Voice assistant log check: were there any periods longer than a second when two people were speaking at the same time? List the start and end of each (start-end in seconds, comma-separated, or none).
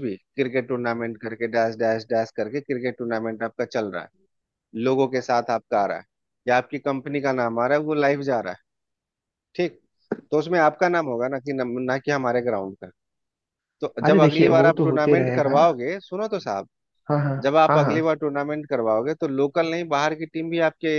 14.1-15.6